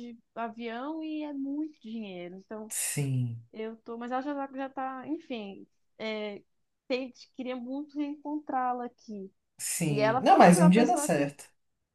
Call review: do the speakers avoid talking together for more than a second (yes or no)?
no